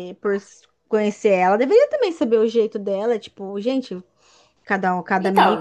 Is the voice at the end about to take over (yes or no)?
yes